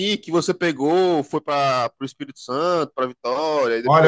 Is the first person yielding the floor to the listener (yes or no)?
yes